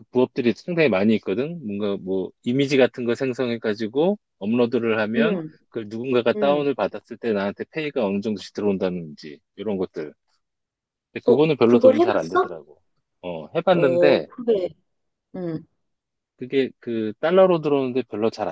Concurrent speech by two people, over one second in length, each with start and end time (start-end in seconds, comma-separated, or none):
11.2-12.6